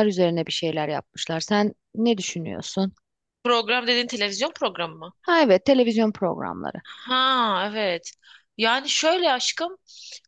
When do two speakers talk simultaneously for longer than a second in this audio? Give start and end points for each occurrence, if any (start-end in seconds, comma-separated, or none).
none